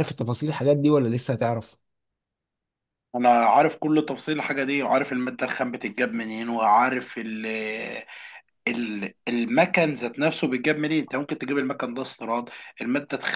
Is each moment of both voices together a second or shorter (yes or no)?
yes